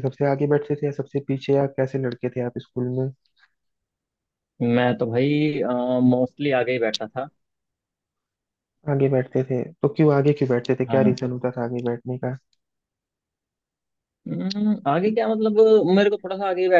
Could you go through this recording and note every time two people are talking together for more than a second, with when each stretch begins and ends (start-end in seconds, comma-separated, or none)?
none